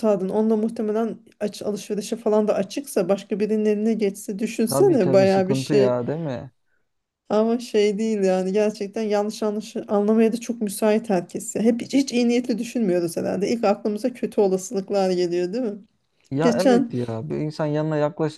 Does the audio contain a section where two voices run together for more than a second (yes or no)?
yes